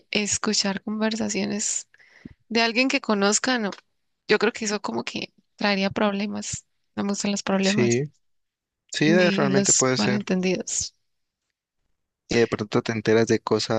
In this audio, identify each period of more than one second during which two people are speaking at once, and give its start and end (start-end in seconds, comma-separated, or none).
9.0-10.3